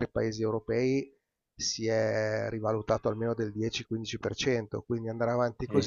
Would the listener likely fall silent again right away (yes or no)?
yes